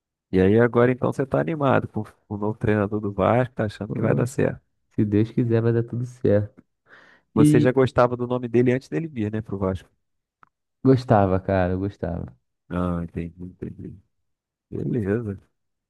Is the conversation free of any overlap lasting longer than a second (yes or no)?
yes